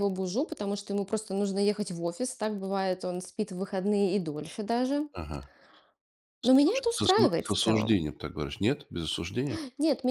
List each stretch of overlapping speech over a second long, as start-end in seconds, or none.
6.4-8.0